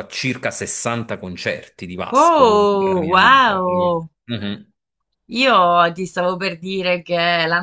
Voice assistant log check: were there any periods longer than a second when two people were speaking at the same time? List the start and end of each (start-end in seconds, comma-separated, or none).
2.1-4.1